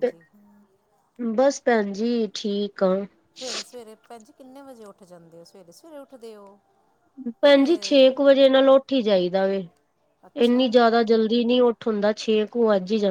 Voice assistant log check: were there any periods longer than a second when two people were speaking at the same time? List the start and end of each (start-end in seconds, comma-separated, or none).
none